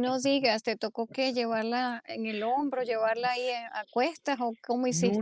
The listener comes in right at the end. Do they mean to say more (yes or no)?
yes